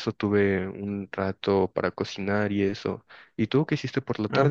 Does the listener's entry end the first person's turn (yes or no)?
yes